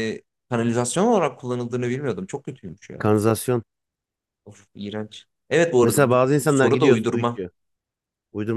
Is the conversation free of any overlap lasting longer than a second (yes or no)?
no